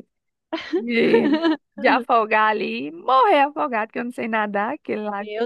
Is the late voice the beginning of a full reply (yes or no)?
yes